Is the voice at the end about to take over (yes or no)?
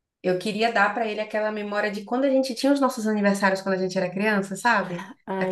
no